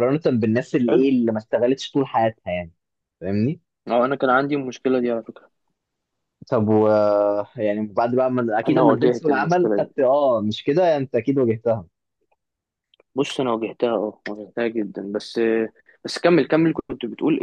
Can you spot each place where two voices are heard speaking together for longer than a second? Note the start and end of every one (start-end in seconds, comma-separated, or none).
8.7-9.9